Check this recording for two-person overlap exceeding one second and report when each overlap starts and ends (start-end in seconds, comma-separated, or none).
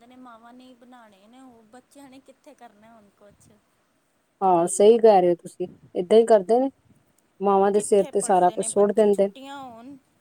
7.7-9.3